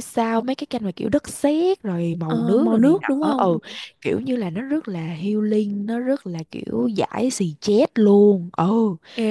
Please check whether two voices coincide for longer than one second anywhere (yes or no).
yes